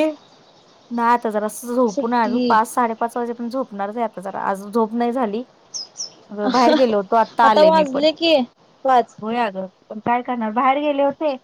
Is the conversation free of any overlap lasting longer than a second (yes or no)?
no